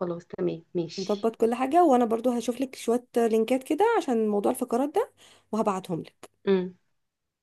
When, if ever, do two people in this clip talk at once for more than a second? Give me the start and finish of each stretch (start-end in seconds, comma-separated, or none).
none